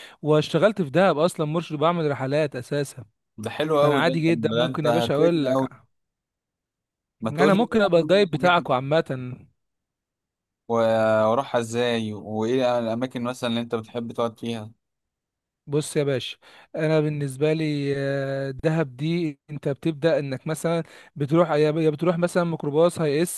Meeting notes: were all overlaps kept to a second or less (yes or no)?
no